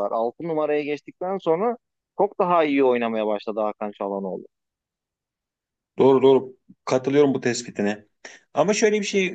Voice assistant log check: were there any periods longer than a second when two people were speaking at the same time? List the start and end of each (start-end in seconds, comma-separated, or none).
none